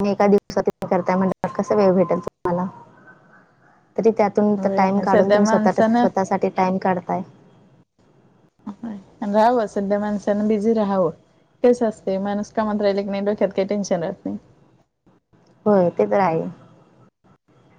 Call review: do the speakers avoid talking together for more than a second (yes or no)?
no